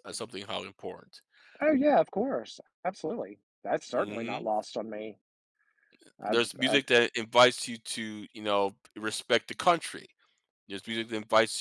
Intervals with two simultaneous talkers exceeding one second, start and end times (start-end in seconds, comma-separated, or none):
none